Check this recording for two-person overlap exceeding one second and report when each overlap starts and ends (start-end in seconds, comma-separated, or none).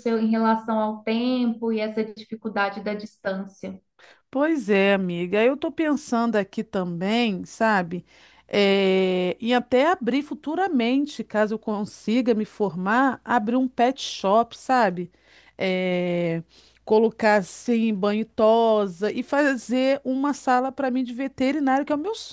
none